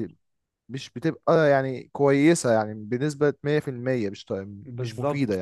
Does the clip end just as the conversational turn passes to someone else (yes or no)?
yes